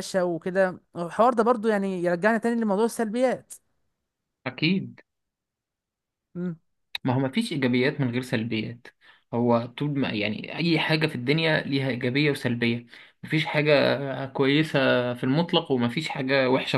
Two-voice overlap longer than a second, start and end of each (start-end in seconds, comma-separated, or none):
none